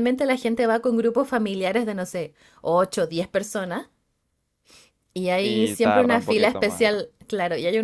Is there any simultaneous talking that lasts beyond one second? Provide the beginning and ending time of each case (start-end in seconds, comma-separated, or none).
5.4-6.9